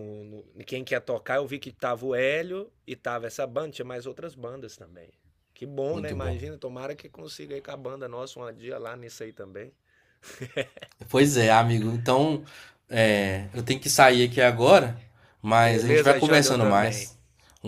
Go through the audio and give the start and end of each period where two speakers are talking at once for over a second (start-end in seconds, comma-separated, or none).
15.6-17.1